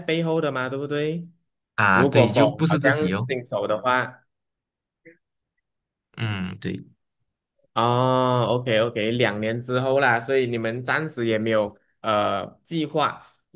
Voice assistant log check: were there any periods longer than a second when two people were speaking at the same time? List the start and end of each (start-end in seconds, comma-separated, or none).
1.9-3.3